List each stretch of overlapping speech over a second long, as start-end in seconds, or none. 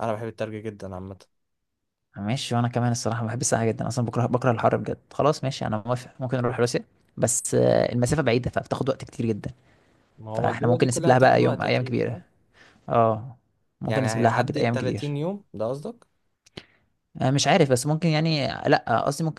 10.3-12.2, 13.8-15.1